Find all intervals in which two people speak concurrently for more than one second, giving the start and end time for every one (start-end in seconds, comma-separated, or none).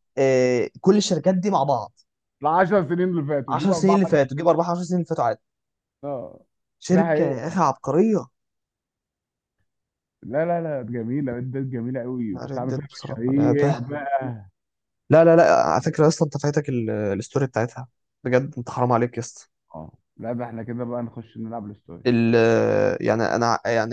12.3-13.8